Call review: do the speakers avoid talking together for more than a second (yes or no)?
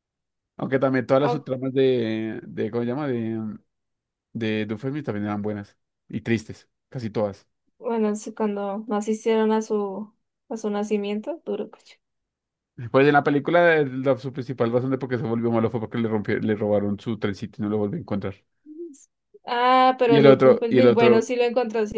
no